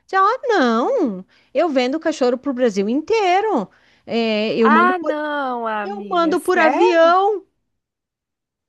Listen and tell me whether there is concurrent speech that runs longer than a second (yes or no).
yes